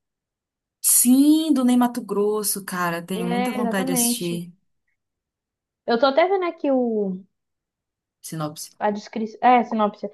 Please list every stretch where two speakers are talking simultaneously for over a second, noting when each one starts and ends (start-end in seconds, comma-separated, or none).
3.1-4.4